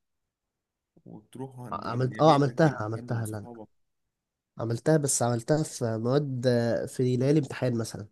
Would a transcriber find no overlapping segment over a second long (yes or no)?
no